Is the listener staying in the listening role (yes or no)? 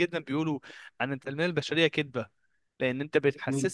yes